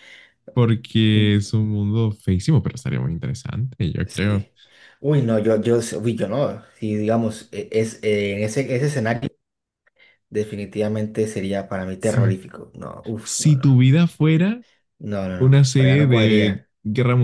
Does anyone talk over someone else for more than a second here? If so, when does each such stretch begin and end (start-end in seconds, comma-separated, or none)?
15.4-16.7